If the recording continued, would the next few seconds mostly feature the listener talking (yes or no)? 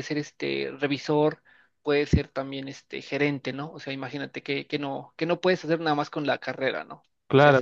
yes